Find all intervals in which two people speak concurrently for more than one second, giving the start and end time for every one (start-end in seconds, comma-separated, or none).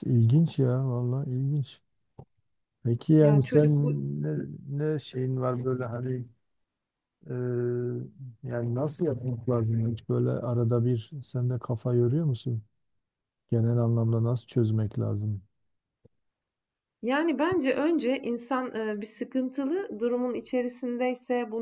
none